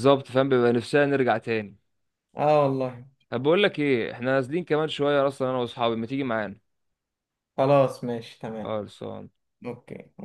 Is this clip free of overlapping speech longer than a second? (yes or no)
yes